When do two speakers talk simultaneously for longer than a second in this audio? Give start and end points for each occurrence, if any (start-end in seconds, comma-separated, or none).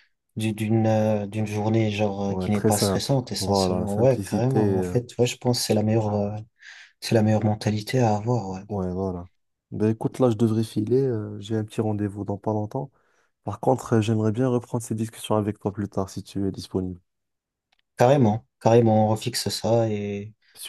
2.3-5.0